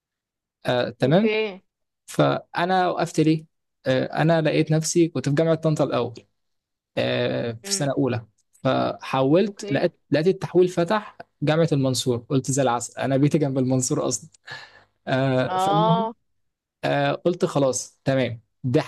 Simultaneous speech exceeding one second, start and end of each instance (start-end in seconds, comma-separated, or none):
none